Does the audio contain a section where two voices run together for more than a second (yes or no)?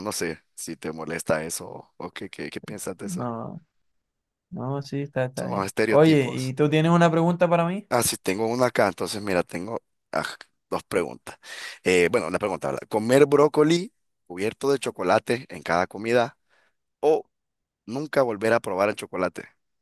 yes